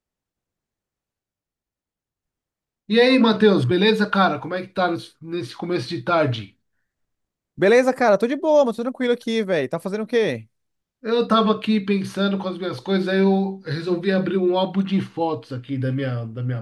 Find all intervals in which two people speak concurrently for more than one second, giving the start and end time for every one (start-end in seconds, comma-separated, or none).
none